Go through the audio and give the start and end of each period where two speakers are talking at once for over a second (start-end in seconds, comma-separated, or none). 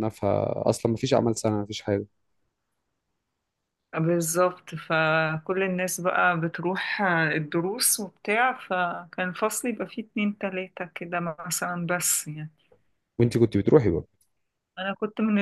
none